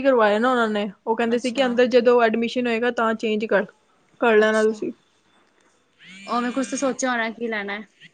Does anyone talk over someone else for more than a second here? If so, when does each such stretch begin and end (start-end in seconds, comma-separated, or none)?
none